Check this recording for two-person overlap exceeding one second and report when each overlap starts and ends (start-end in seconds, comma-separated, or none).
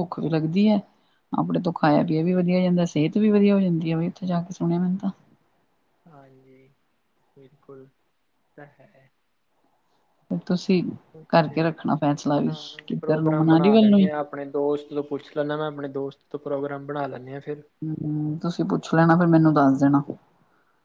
12.5-14.1